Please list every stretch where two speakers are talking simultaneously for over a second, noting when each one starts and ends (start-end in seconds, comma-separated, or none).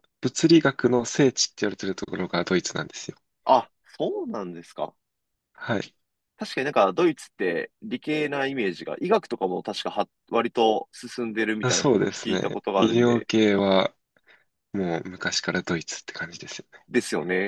11.6-13.3